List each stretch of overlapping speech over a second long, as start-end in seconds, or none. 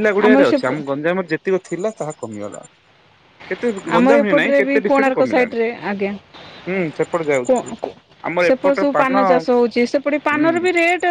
4.0-5.5